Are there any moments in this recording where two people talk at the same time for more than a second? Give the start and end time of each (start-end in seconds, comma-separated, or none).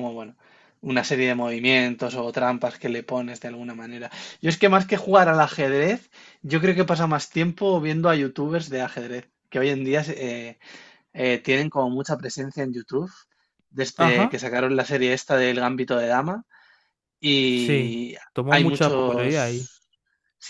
17.5-19.5